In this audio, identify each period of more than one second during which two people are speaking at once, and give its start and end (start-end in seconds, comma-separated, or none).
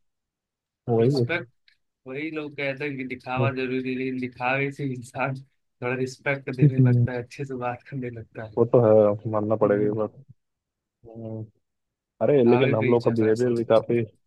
12.2-13.5